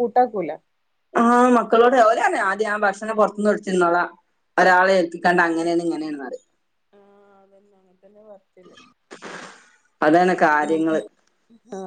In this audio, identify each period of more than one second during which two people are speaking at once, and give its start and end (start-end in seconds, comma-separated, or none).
none